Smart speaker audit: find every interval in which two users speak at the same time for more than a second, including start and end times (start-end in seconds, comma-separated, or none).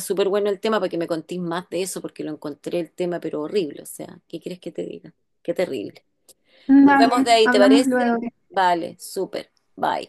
6.8-8.0